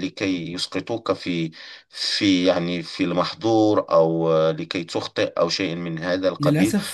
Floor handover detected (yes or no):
yes